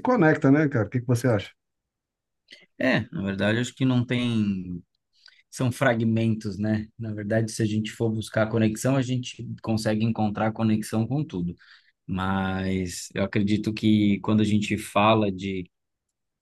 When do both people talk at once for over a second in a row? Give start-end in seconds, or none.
none